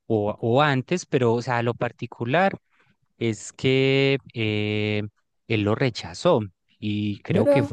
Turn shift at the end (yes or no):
no